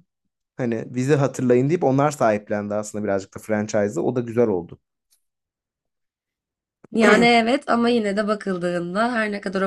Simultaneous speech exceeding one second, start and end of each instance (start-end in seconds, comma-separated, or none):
none